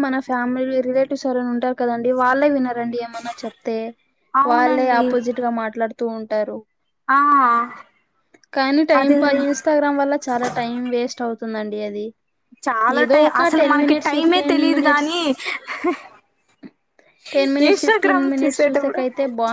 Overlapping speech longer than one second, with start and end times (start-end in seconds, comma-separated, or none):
13.0-15.1, 17.7-19.0